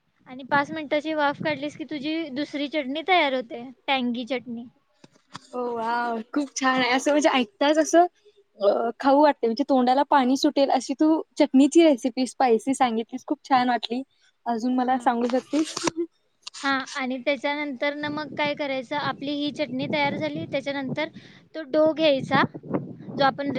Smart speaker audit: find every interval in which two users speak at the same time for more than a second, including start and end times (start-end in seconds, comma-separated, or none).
none